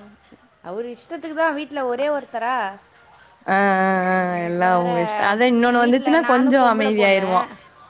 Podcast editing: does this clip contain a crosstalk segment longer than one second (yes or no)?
yes